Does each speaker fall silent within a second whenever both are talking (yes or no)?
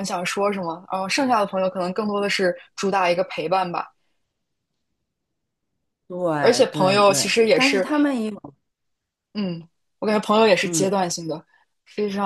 no